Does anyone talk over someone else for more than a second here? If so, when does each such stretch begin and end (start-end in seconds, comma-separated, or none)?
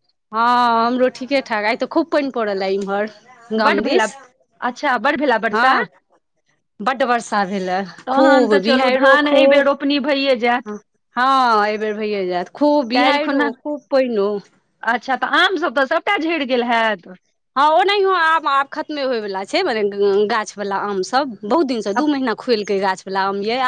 8.2-9.6